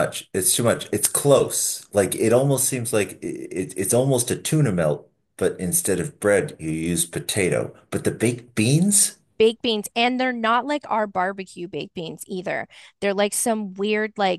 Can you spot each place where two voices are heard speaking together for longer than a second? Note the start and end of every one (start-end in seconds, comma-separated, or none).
none